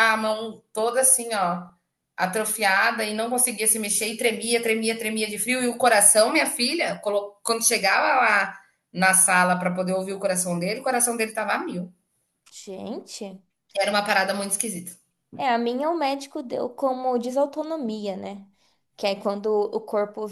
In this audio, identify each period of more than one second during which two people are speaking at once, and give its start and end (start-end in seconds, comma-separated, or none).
none